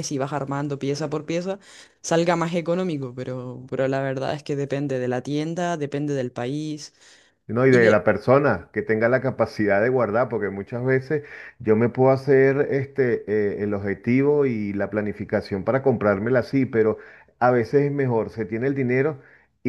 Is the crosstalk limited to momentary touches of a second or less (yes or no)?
yes